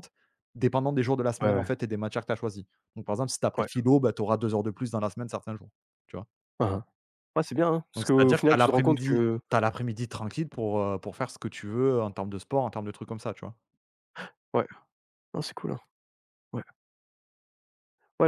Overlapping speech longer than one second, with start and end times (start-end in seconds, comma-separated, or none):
8.0-9.4